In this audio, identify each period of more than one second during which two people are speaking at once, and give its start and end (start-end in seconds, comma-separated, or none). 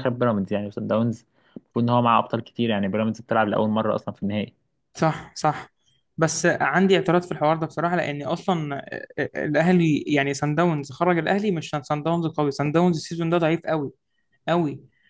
none